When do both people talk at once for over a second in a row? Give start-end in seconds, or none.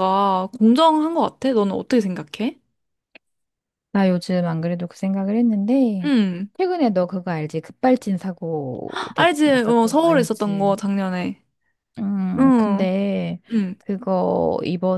9.2-10.8